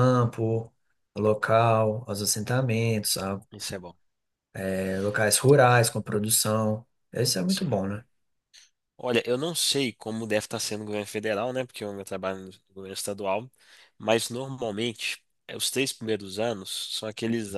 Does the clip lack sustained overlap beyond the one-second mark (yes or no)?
yes